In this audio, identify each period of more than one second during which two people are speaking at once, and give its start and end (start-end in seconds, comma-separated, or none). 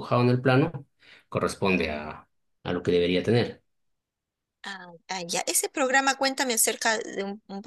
none